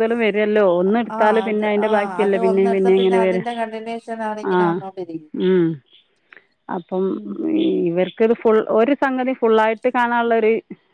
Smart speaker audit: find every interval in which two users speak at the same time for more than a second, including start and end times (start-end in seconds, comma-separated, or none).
1.2-3.4